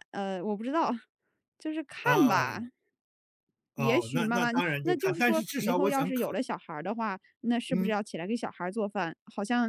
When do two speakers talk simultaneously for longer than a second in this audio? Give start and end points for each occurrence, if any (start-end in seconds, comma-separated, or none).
3.8-6.4